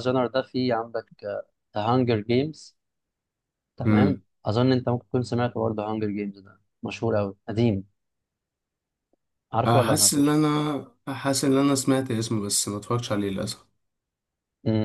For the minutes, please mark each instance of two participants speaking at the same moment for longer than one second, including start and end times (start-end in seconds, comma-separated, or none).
none